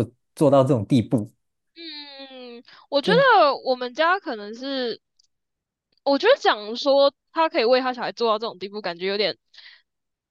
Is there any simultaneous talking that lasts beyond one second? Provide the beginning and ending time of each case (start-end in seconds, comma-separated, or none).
none